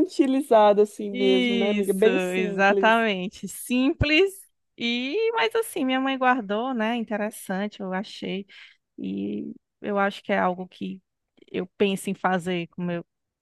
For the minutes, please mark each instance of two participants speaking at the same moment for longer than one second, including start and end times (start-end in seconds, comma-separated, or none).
1.1-2.9